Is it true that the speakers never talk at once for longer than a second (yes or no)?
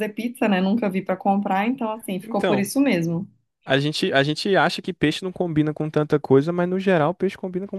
yes